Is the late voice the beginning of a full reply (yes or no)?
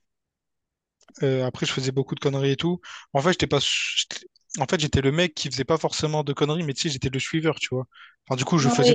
no